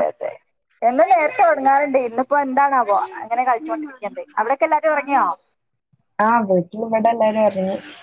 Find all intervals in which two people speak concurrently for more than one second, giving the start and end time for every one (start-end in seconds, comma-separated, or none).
none